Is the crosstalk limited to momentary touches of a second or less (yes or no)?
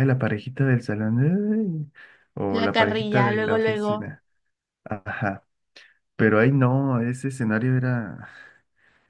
no